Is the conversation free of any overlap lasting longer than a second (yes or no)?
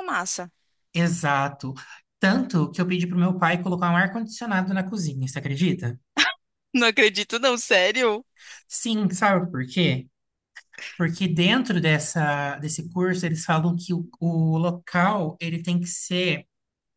yes